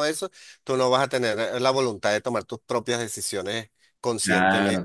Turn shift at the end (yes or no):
yes